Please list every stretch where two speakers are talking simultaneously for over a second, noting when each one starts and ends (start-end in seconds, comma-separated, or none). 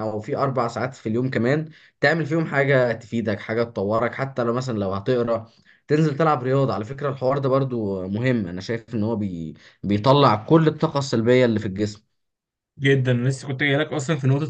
none